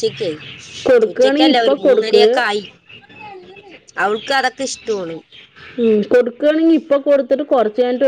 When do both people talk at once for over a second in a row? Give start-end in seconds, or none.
1.1-2.4